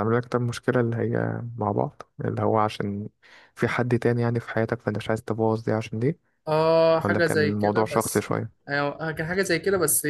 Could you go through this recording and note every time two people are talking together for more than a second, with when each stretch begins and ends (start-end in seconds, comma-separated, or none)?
7.0-8.3